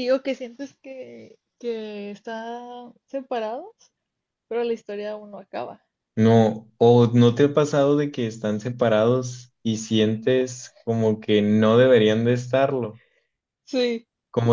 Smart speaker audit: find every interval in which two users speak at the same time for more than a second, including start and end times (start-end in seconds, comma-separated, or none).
none